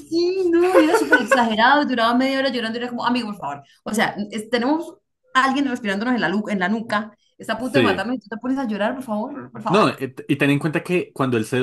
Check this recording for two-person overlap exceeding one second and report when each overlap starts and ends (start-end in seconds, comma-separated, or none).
none